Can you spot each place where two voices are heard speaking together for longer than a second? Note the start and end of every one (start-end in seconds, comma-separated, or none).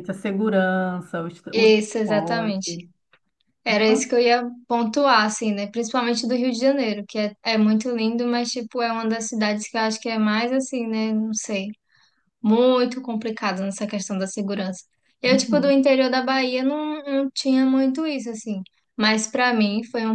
1.5-2.8